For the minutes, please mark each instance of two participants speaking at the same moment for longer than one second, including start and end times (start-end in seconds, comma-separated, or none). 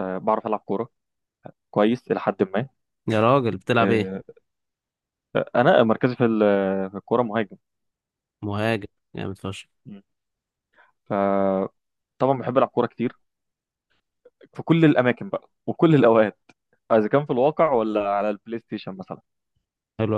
none